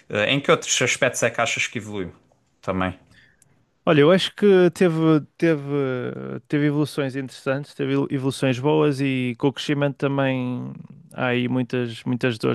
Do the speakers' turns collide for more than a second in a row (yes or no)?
no